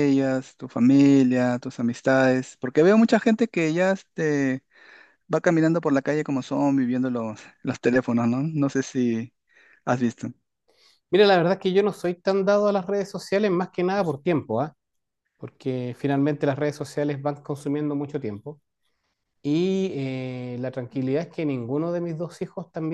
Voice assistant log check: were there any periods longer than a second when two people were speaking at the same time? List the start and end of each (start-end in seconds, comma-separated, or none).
none